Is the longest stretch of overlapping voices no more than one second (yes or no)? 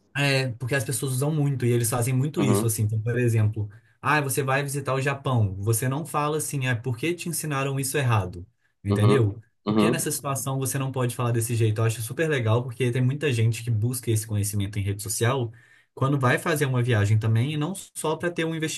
no